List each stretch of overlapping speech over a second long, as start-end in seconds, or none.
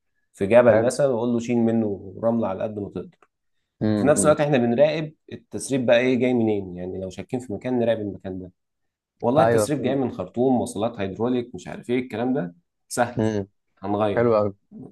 none